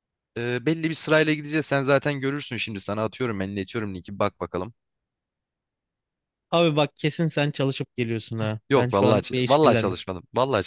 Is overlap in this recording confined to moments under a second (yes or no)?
no